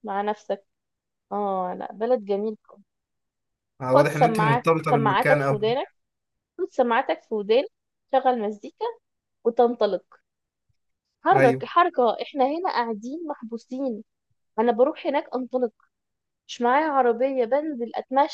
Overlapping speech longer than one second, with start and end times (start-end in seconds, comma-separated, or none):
3.9-5.8